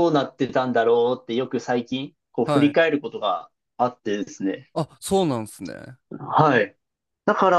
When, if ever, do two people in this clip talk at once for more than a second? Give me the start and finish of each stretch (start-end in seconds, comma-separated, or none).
none